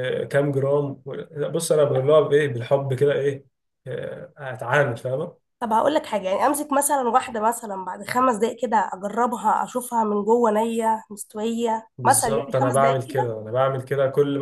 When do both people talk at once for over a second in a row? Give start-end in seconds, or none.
12.0-13.3